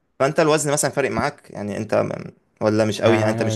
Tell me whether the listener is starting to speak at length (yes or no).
yes